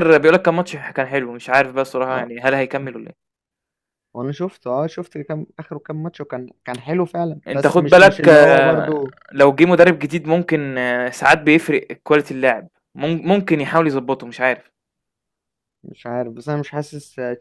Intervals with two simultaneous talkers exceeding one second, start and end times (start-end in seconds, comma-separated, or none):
7.5-9.1